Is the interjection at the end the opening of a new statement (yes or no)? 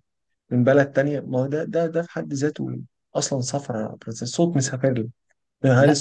no